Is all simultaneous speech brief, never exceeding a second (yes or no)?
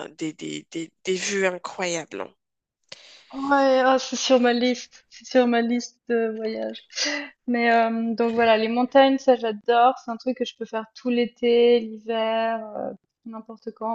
yes